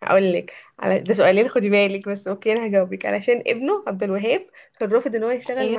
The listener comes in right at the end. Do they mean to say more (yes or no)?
no